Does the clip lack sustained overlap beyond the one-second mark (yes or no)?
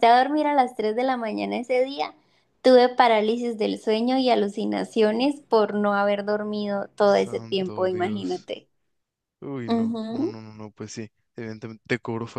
no